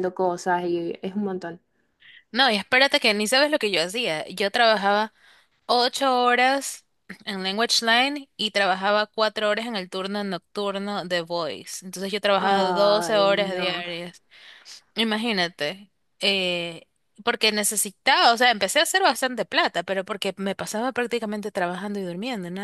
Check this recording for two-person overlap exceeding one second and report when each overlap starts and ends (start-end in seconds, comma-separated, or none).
12.4-13.8